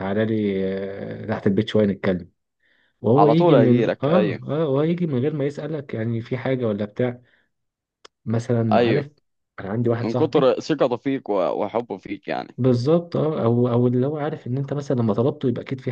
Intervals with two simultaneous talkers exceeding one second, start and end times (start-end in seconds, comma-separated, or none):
3.1-4.4